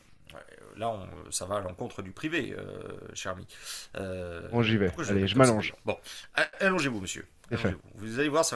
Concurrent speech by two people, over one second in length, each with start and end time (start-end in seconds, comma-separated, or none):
4.5-5.8